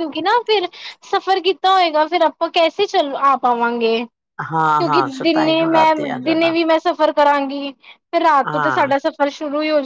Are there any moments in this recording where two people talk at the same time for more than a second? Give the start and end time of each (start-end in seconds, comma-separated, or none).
4.5-6.5